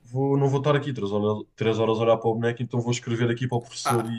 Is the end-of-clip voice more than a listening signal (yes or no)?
yes